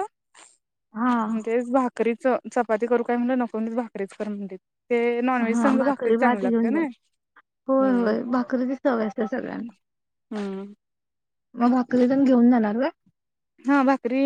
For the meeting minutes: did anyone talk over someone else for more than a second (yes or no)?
yes